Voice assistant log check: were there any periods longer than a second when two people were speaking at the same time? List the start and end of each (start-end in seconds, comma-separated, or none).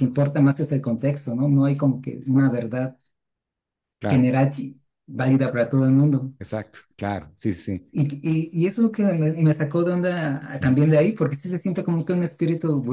none